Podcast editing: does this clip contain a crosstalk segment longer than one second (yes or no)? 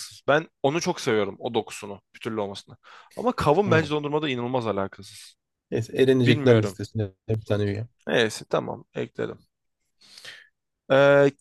no